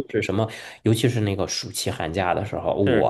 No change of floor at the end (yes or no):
yes